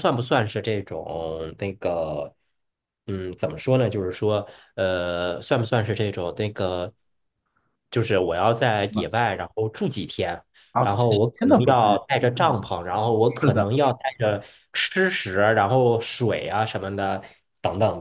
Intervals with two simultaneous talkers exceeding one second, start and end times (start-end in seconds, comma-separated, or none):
10.8-12.6